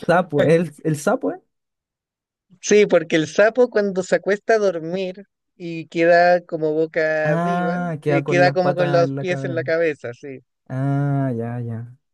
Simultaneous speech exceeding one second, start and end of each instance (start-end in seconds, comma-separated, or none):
7.2-9.7